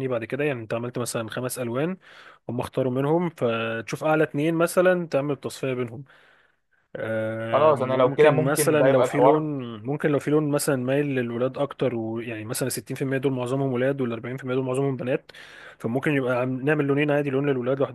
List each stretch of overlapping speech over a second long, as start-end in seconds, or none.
7.5-9.4